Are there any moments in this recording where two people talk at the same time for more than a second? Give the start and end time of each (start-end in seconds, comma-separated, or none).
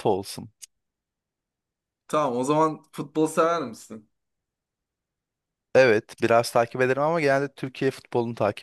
none